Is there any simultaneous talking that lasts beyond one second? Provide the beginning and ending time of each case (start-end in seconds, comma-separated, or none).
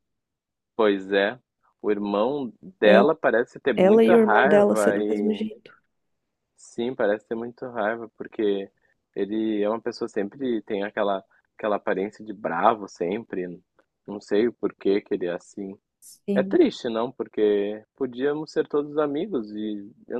3.8-5.5